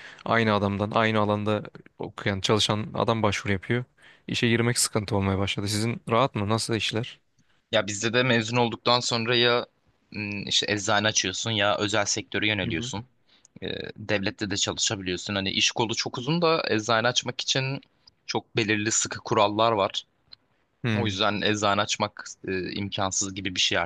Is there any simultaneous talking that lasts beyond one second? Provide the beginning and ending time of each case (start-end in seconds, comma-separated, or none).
none